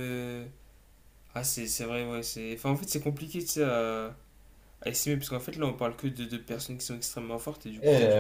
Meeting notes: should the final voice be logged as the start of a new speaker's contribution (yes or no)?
yes